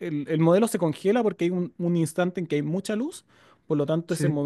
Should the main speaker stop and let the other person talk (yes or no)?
no